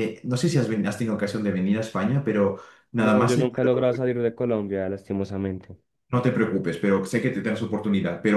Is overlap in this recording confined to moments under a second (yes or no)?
yes